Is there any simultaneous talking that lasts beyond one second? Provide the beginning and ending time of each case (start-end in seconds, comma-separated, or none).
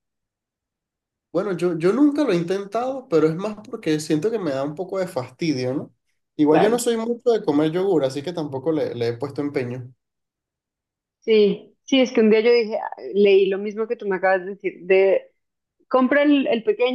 none